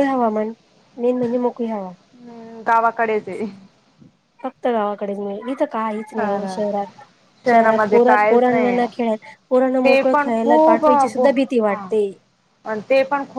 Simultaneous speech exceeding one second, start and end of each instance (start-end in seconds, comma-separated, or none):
7.5-8.8, 9.8-11.9